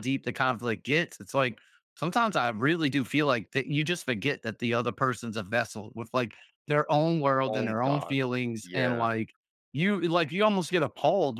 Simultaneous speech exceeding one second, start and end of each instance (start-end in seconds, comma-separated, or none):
7.5-9.1